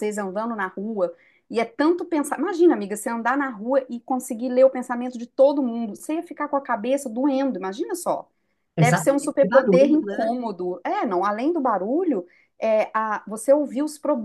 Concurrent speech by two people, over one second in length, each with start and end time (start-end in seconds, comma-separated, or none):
8.8-10.3